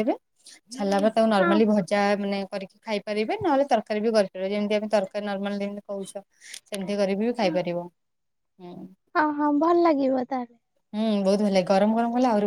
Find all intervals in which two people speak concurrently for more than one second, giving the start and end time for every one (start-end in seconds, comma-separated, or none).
none